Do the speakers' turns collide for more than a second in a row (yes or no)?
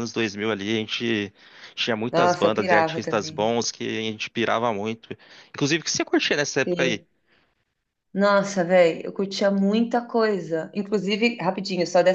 yes